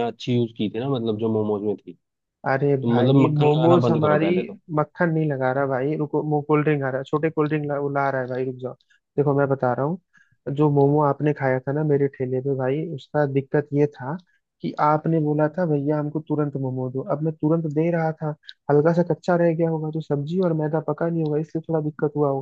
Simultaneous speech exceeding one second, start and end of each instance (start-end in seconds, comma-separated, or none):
2.6-4.3